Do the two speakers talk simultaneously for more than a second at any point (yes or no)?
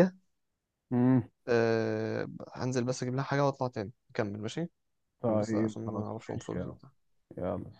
yes